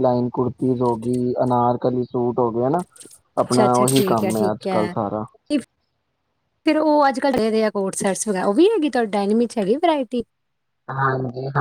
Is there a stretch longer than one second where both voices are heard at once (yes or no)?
yes